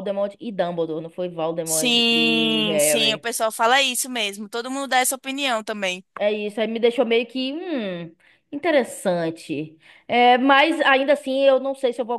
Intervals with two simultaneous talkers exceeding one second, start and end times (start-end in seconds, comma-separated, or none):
1.7-3.2